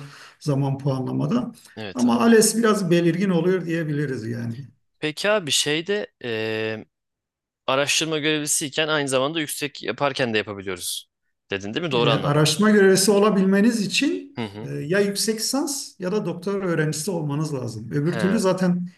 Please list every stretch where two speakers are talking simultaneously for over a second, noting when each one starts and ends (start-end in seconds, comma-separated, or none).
none